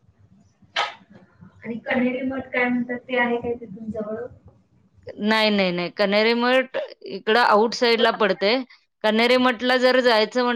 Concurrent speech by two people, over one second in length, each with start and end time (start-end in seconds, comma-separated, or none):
none